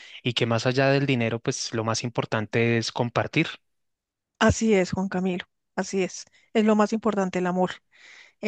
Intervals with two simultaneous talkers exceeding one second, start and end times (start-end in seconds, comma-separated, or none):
none